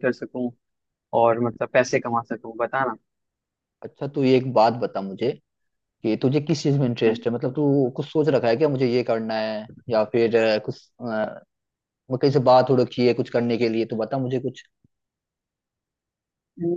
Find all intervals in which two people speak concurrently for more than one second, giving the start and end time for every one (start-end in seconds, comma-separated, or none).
none